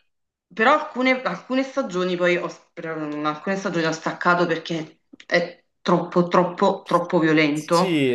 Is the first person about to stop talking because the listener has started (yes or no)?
yes